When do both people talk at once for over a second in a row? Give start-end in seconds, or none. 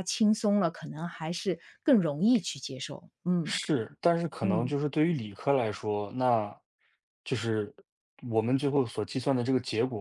none